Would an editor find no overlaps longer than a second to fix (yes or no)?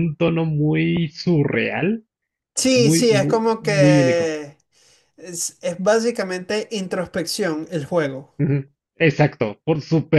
no